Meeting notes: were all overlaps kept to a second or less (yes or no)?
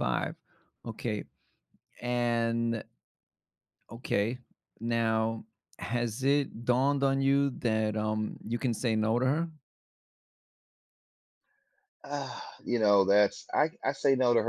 yes